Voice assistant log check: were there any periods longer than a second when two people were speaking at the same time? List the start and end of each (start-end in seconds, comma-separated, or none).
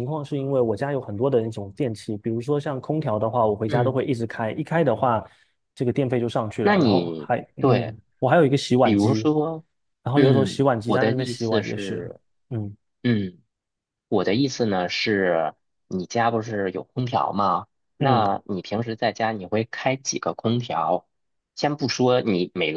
6.6-8.0, 10.1-12.0